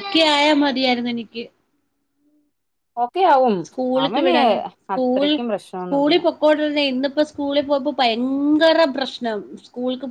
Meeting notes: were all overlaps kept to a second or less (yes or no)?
yes